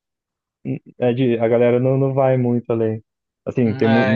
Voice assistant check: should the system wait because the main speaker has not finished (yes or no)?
yes